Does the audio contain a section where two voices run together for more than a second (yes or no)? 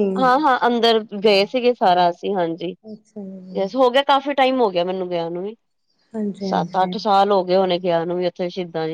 no